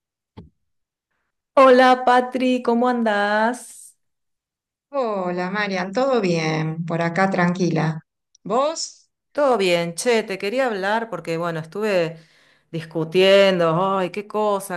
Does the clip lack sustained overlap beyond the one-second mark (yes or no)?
yes